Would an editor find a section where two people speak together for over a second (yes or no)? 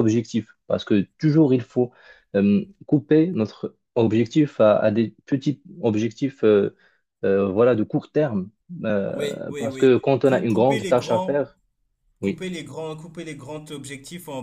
yes